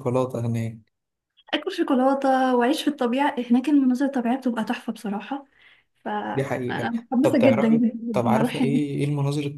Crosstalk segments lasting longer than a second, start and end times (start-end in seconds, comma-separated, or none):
6.3-8.8